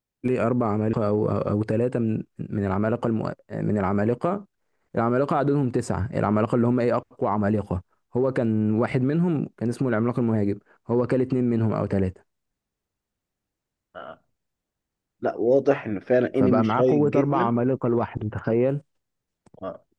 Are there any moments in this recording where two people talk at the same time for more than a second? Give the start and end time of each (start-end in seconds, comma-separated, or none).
16.3-17.5